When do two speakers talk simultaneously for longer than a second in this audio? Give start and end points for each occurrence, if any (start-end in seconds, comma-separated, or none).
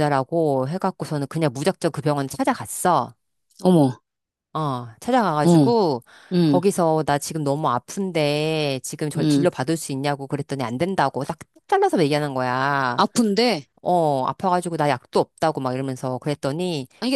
none